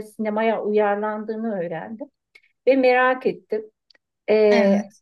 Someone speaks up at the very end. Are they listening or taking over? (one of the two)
listening